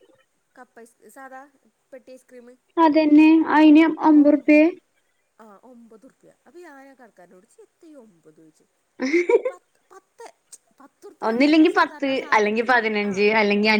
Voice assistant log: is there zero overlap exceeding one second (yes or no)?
no